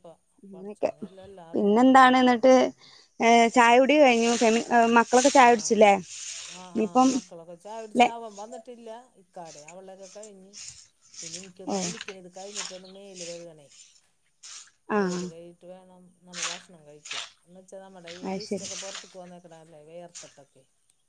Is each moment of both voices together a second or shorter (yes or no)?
yes